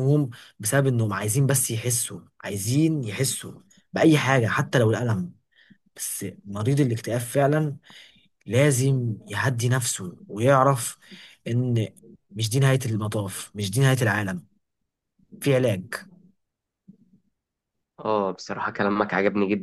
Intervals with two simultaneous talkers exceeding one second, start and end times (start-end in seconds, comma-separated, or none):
none